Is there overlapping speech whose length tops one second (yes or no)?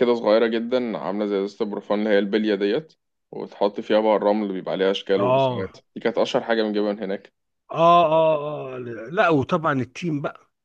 no